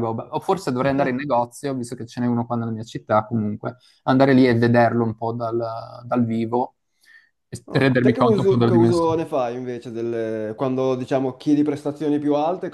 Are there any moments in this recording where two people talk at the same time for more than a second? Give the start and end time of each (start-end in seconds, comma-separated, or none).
7.7-9.2